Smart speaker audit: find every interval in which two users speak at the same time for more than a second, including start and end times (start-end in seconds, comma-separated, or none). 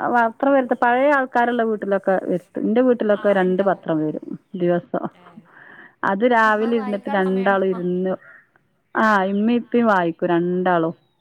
6.6-8.0